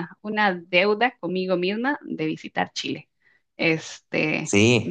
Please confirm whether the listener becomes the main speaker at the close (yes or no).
no